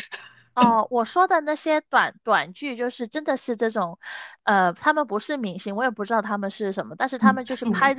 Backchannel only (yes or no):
yes